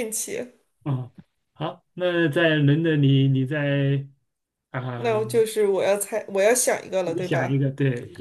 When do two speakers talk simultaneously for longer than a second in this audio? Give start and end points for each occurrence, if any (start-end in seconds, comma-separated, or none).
none